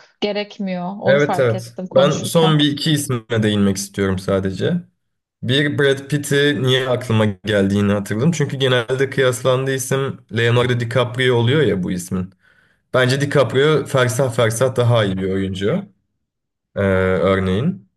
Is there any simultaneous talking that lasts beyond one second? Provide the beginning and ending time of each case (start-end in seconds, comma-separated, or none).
1.1-2.6